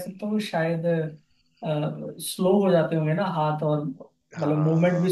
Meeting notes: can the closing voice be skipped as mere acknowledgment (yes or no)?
yes